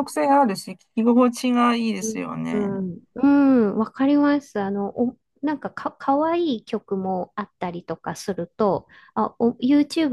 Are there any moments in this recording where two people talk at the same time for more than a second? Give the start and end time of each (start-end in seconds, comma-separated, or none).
none